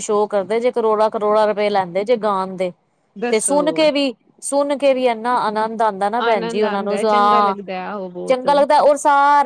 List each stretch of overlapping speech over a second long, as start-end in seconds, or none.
6.2-7.5